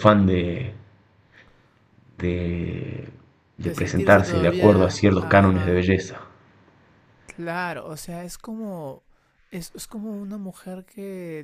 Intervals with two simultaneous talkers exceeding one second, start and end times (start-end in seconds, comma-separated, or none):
3.6-5.8